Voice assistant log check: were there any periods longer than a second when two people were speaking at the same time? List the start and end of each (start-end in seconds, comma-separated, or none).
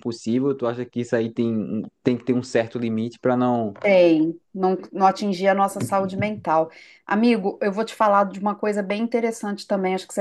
none